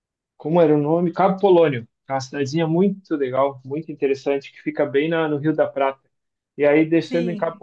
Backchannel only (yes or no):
yes